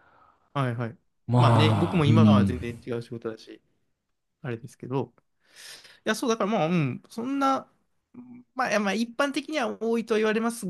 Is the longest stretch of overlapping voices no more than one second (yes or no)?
no